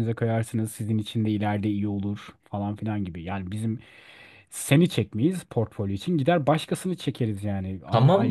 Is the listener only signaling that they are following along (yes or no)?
no